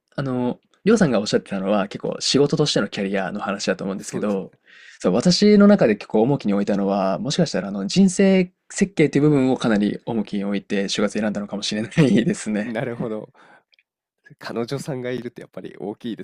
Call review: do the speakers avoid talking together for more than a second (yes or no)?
yes